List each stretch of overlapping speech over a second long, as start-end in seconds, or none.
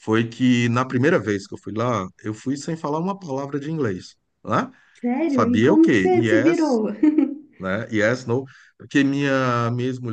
5.3-6.8